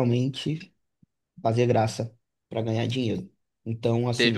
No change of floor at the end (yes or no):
no